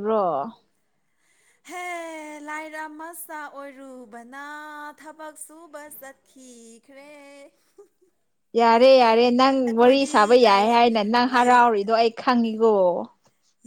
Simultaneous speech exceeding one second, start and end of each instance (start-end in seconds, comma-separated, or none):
none